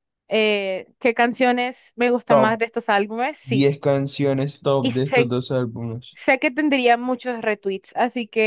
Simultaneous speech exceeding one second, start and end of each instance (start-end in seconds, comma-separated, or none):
none